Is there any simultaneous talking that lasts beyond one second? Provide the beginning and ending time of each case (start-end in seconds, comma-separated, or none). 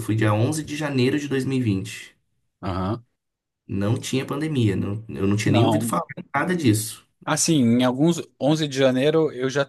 none